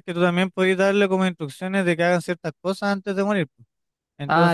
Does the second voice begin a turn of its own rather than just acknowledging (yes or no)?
yes